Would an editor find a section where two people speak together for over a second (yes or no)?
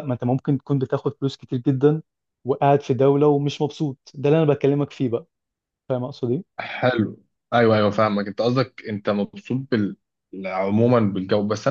no